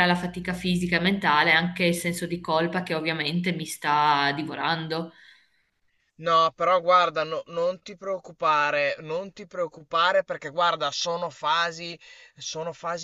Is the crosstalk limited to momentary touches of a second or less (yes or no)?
yes